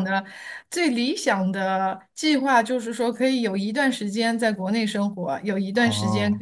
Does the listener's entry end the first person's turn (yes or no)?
no